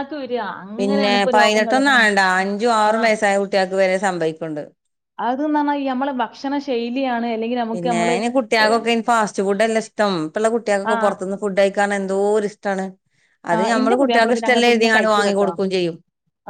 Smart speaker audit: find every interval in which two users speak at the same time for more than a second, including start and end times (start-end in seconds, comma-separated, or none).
13.5-15.5